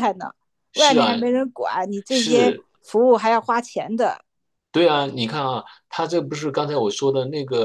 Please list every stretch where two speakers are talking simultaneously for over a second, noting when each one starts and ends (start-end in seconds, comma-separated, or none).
none